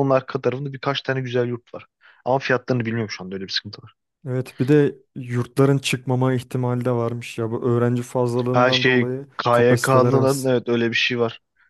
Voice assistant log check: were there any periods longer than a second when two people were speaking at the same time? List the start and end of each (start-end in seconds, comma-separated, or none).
8.5-10.5